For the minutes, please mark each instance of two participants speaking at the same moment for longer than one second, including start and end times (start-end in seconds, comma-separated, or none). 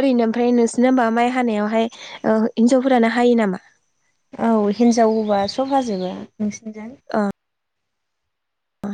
none